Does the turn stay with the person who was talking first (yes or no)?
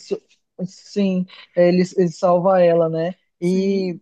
yes